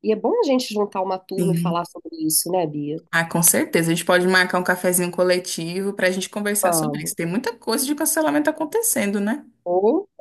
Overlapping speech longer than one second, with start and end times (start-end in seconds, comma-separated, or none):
none